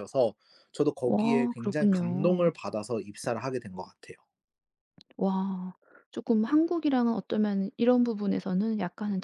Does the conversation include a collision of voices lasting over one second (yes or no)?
yes